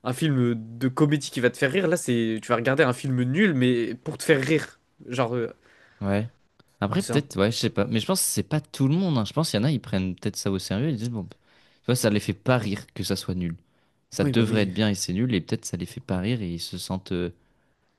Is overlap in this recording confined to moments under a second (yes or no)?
yes